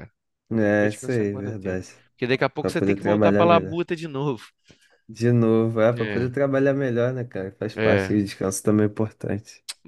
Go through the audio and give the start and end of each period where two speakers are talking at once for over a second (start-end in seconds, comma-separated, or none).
0.5-1.9, 2.6-3.8